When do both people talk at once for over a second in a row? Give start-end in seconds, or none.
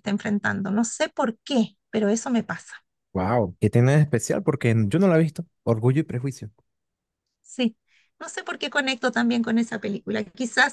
none